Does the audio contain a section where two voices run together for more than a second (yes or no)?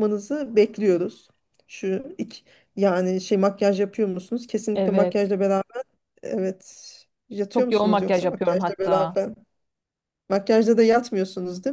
yes